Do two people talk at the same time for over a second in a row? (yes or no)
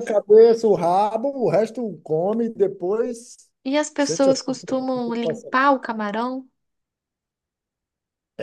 yes